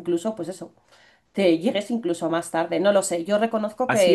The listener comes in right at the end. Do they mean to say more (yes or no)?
no